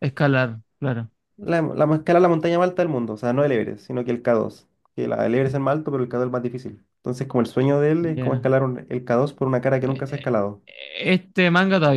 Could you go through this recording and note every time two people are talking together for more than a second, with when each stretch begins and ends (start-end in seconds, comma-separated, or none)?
none